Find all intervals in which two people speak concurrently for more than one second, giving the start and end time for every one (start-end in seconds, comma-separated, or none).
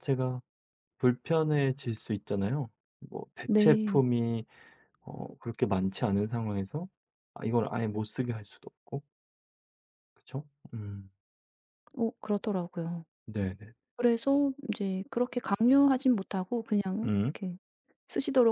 none